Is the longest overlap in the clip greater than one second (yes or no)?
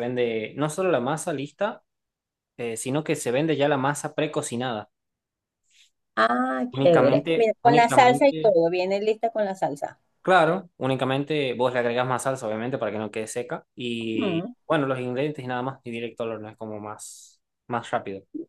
yes